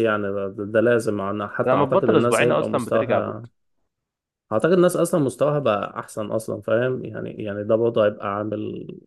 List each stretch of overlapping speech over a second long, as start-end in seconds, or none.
1.7-3.5